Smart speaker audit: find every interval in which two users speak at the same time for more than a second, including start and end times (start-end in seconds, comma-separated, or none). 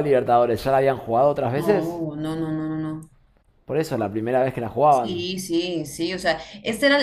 none